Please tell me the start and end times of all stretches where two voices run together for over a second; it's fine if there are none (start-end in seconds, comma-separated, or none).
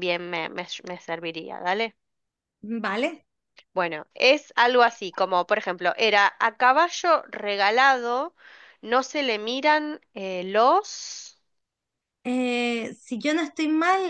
none